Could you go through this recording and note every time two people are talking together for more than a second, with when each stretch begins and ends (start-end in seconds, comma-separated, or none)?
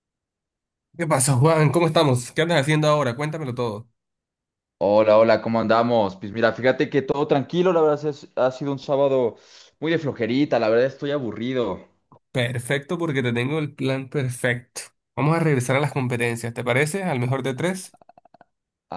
none